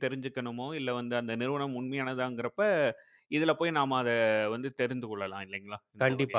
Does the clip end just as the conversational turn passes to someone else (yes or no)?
yes